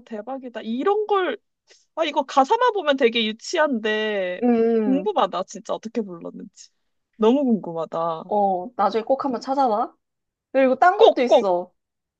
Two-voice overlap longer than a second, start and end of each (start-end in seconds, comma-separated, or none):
none